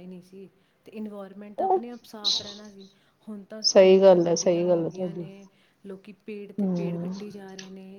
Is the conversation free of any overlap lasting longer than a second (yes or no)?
no